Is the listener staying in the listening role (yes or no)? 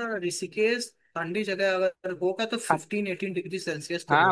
no